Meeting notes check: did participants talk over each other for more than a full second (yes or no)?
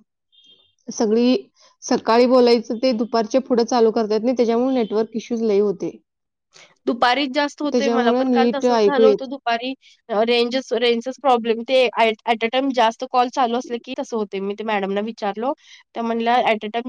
yes